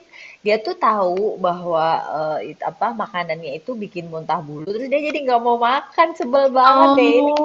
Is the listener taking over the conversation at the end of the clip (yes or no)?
yes